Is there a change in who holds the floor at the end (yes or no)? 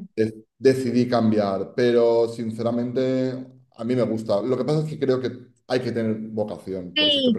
yes